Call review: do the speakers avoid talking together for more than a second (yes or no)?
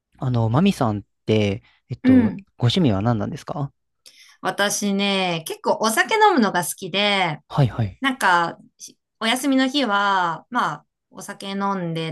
yes